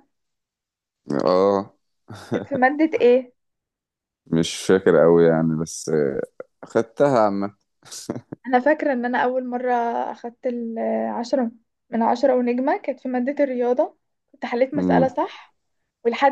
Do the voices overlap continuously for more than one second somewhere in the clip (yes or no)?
no